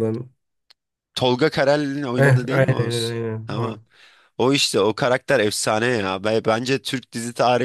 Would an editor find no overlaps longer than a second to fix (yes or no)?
no